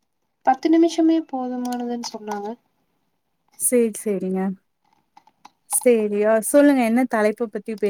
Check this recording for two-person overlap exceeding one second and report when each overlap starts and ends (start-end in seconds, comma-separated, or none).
none